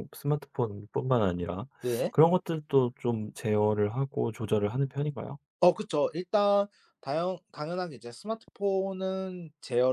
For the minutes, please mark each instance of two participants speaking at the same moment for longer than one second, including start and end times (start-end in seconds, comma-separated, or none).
none